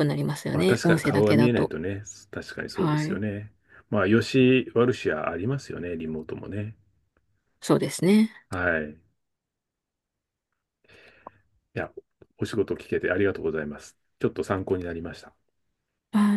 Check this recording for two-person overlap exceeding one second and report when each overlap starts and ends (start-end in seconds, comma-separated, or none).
0.5-1.7